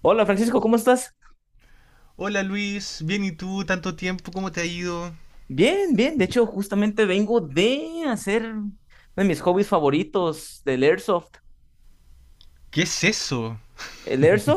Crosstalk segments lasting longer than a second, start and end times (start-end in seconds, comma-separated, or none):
none